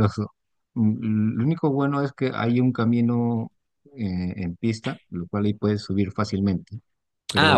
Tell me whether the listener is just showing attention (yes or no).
yes